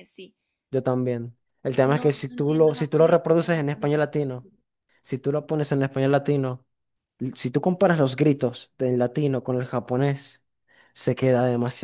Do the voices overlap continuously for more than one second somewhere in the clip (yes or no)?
yes